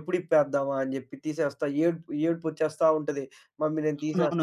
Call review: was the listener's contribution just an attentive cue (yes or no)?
no